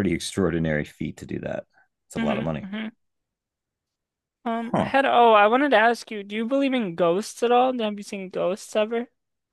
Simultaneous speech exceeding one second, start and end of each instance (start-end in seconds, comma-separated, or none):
none